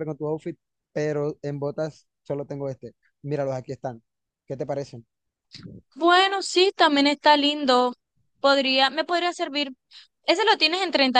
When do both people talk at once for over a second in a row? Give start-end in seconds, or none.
none